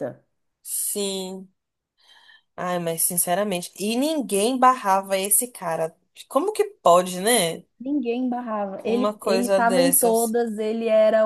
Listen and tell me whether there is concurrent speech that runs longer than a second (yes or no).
yes